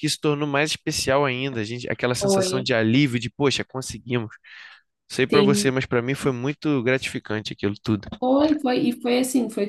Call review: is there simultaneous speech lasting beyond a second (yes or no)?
no